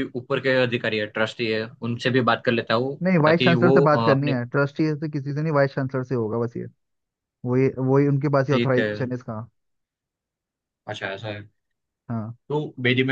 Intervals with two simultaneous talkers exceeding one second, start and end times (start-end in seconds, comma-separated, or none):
3.0-4.4